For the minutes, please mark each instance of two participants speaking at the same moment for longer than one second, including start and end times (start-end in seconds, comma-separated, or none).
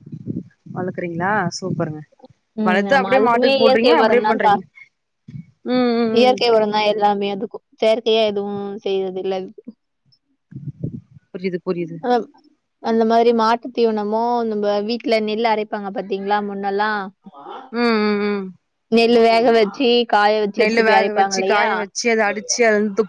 2.7-4.5